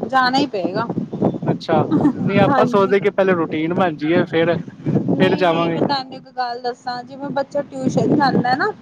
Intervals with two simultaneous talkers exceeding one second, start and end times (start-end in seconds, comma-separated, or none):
none